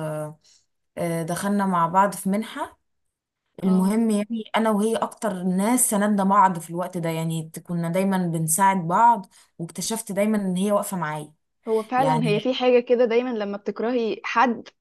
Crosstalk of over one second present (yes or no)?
no